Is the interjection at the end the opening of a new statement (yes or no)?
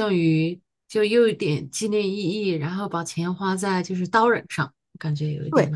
yes